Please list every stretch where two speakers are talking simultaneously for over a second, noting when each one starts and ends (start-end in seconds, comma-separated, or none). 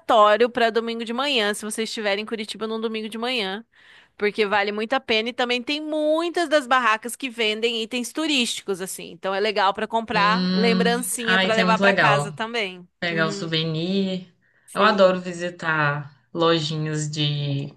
10.1-12.4